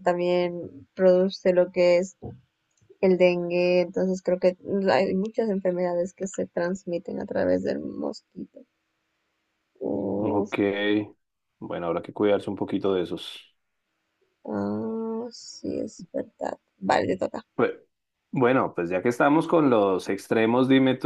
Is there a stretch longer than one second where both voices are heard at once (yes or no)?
no